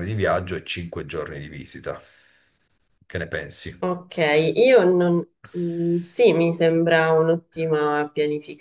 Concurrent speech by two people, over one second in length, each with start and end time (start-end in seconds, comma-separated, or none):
none